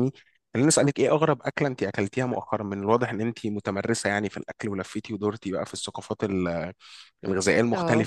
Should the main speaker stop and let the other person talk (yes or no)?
no